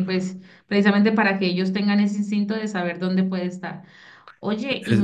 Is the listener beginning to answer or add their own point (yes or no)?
no